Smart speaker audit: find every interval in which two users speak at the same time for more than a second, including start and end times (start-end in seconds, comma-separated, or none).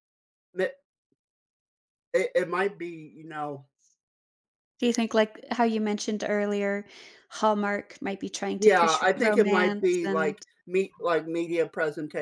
8.6-10.4